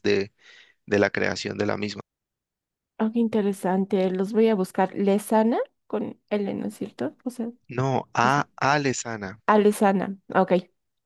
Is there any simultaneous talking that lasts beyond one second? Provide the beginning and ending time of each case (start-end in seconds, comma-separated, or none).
none